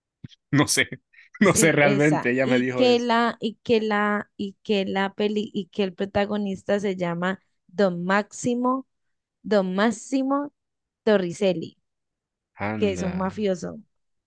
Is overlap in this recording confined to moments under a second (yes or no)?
no